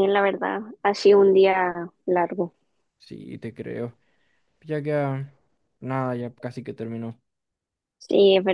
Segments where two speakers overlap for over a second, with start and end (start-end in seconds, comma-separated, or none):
none